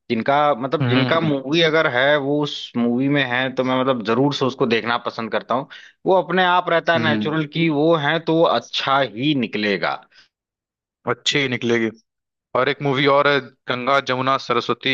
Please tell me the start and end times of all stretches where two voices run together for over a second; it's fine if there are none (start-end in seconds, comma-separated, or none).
none